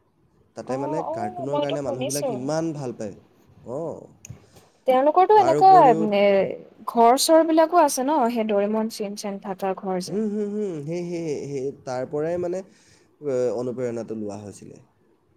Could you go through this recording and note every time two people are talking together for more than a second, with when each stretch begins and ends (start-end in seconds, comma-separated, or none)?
0.7-2.3